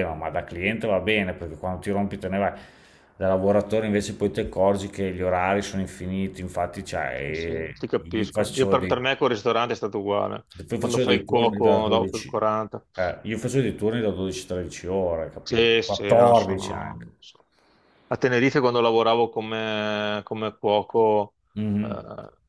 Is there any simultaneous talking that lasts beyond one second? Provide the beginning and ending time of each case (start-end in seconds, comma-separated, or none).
7.2-8.9, 10.7-12.3, 15.4-17.1